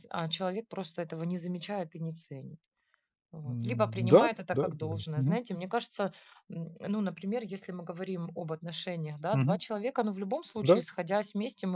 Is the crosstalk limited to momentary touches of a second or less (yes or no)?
no